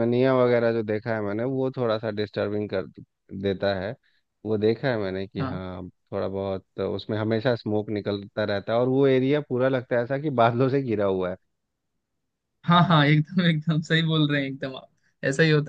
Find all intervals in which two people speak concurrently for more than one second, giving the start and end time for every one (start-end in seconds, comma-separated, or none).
none